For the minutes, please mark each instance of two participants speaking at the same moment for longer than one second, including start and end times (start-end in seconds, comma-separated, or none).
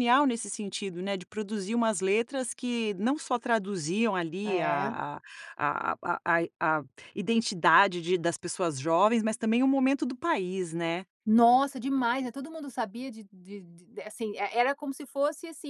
none